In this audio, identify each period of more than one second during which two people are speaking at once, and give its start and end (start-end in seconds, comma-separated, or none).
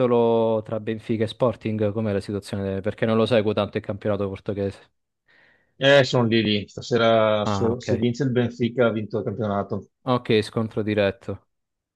none